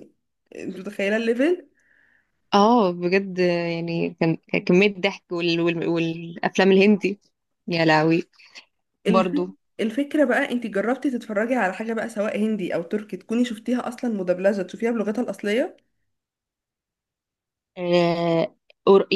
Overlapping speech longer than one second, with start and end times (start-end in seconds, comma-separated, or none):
none